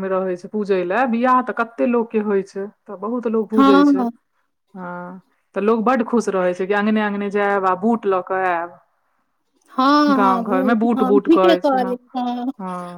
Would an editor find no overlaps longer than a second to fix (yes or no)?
no